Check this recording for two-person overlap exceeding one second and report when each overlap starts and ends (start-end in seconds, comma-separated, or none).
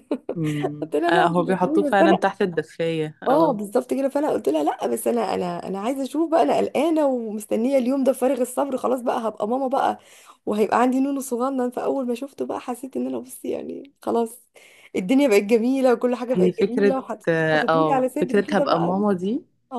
0.8-2.3, 16.3-19.0